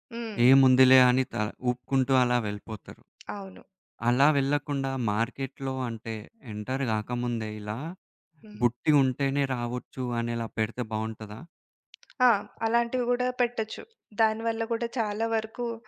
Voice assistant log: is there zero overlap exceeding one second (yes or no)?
yes